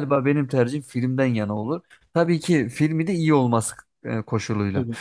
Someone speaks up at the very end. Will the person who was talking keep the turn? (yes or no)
yes